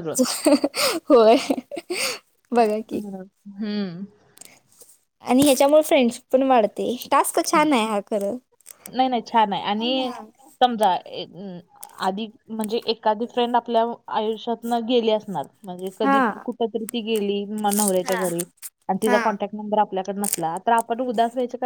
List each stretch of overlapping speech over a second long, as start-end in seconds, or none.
none